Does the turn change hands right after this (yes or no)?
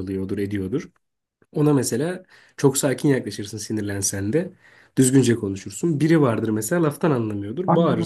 yes